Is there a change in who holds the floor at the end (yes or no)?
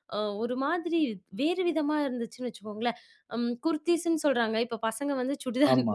no